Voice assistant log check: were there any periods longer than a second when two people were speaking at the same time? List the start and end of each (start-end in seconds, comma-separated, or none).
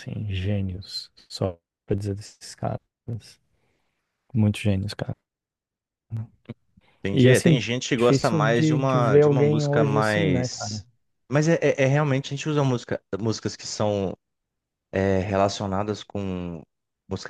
7.1-10.8